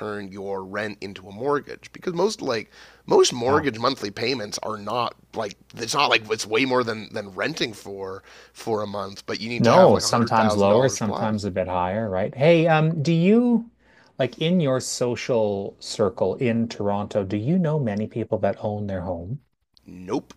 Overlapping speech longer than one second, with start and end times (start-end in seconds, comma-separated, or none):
9.6-11.3